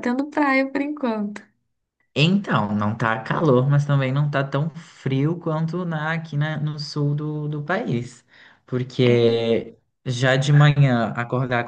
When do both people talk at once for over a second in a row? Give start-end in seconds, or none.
none